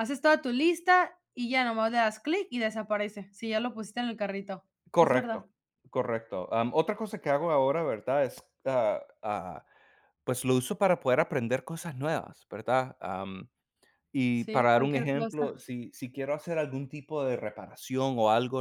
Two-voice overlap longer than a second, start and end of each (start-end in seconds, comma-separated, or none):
14.3-15.5